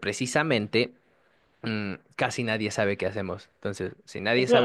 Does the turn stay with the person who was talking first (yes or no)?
no